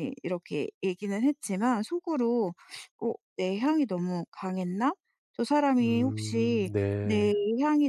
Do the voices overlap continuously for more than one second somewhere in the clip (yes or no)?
yes